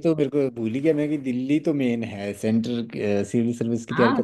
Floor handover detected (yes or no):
yes